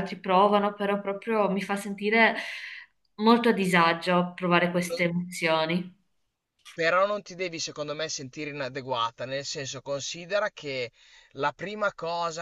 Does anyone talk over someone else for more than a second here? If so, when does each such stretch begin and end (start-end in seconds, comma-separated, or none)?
none